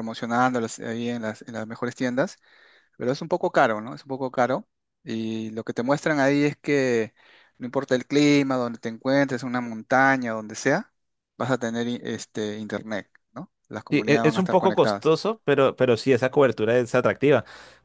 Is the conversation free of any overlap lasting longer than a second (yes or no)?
no